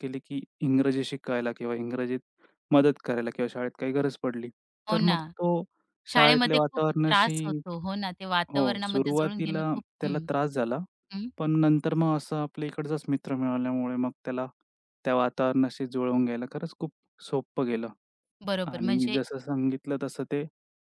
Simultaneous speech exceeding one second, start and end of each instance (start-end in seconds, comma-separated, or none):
6.1-7.6, 8.5-10.2